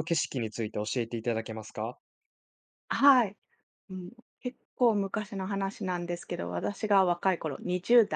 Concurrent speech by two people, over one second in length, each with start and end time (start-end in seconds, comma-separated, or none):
none